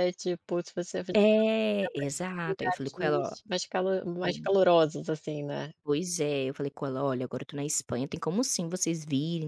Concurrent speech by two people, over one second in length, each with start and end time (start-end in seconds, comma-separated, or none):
1.9-3.4